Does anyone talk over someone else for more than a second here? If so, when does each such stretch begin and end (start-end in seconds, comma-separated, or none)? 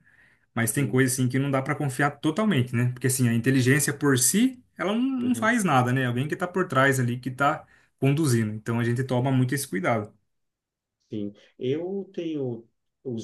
none